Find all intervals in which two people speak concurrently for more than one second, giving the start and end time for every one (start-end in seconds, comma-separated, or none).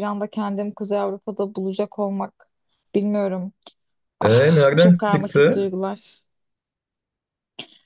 4.2-5.7